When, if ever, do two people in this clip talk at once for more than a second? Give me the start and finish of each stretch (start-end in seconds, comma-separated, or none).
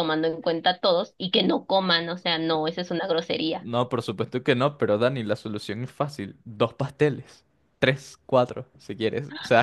none